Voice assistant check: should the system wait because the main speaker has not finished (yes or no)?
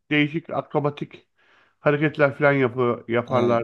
no